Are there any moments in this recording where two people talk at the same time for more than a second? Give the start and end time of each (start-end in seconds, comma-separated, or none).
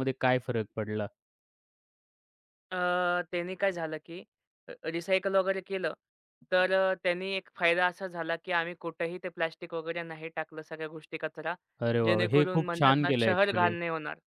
12.1-13.7